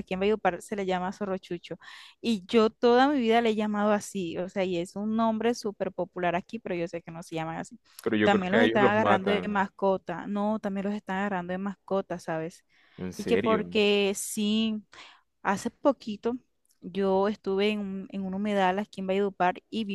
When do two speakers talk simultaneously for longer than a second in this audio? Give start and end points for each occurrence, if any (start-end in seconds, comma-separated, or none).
8.2-9.7